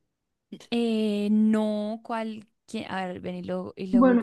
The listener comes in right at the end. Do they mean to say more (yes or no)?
yes